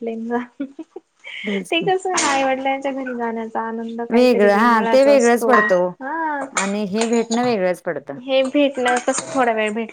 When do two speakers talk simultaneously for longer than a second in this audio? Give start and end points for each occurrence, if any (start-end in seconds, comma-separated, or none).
4.1-5.5